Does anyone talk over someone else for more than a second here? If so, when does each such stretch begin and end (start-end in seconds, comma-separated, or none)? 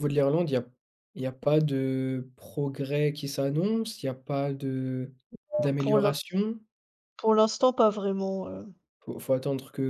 none